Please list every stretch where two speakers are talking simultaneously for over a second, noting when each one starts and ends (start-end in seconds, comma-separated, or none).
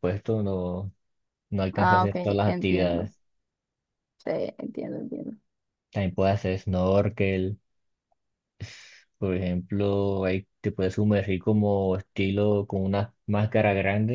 1.7-3.1